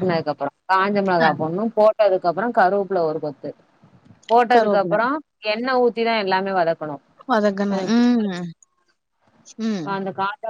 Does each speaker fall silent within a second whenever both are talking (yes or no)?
yes